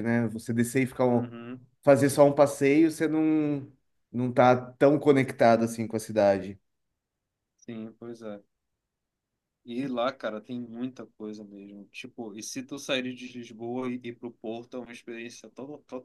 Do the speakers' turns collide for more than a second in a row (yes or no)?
no